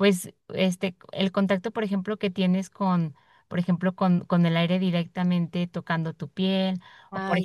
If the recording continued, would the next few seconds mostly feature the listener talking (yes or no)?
no